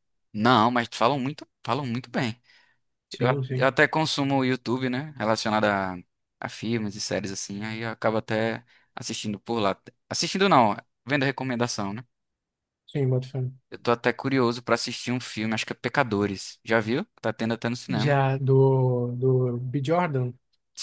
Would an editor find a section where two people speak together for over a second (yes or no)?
no